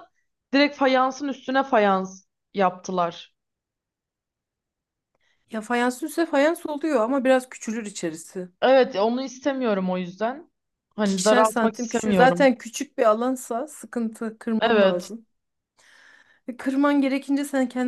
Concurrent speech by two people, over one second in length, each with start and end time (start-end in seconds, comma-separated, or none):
10.9-12.5